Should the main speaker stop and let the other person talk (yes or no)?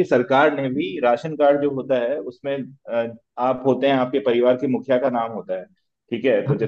no